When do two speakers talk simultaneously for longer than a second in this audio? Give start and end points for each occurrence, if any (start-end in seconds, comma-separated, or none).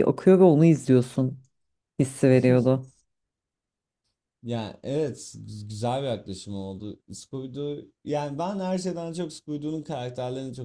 none